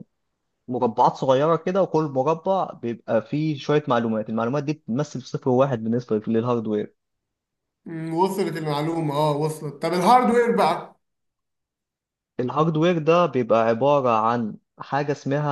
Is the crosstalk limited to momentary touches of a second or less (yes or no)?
yes